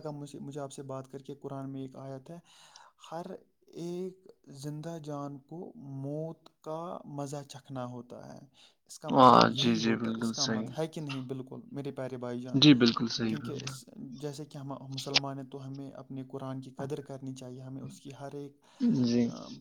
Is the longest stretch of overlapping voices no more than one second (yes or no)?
no